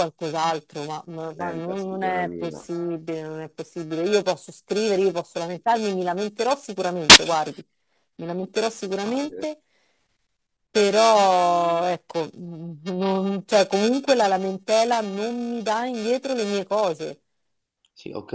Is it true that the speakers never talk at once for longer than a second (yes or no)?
no